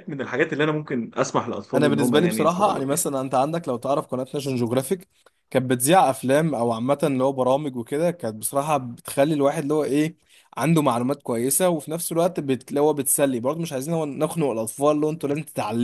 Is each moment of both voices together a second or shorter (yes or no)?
no